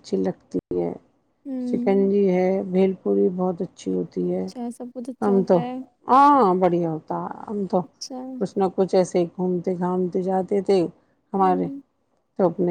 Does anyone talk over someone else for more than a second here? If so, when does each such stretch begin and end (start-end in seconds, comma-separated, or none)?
none